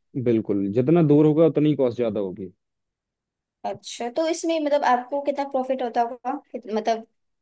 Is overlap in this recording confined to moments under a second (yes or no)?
yes